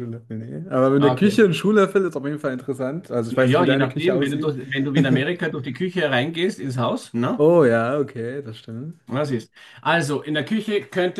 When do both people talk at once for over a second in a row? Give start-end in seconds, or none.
3.3-4.5